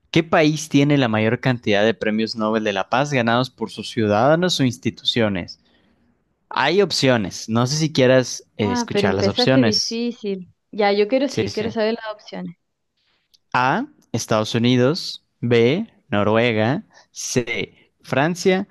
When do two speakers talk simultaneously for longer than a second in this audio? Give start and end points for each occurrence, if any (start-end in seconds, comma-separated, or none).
8.6-10.0